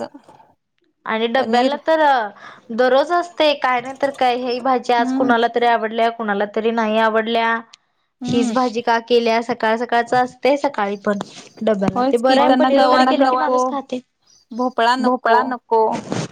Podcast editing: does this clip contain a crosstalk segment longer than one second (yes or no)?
yes